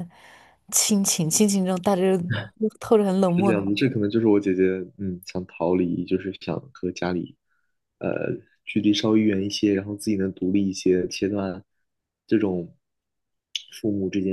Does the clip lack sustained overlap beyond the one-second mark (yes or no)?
yes